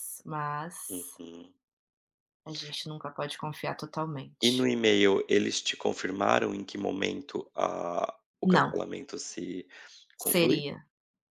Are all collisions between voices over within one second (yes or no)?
yes